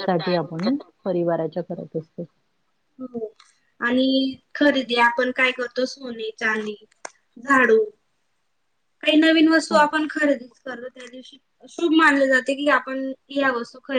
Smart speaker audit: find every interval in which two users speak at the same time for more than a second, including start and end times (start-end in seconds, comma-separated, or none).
none